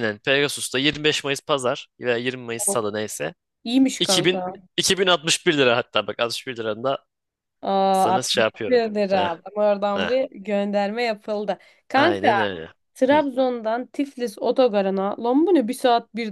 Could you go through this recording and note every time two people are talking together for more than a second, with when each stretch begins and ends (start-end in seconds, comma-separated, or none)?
7.9-9.3